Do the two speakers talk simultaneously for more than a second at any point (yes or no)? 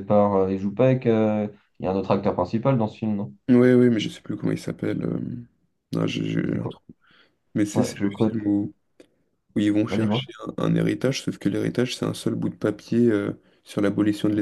no